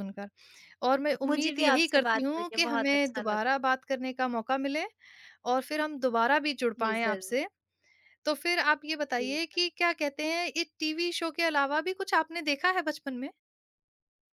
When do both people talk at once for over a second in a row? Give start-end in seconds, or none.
1.2-3.5